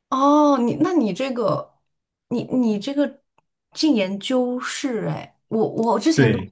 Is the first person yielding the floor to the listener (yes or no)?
no